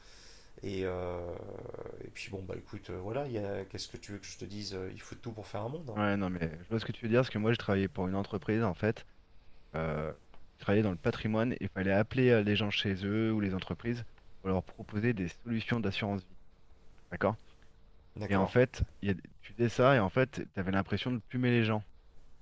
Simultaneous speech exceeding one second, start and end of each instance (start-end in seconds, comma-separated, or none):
none